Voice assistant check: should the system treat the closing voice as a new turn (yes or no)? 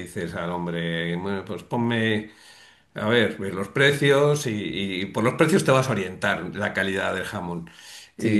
yes